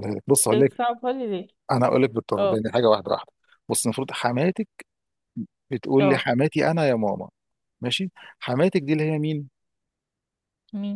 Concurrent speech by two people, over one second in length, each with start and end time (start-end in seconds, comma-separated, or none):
none